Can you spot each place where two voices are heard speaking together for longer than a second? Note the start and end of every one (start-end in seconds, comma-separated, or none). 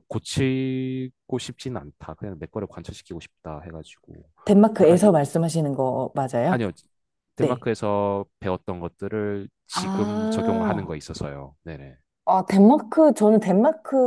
9.7-11.0